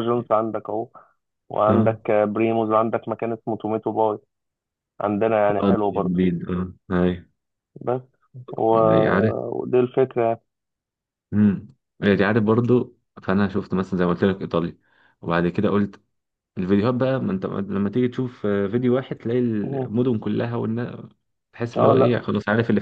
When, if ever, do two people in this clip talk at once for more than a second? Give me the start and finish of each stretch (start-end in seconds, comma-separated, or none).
none